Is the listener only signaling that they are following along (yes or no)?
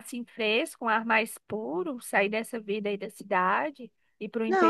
no